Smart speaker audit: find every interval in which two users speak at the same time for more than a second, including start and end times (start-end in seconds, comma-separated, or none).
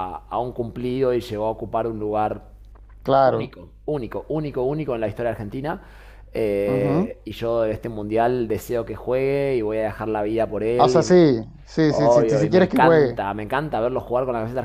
11.9-13.2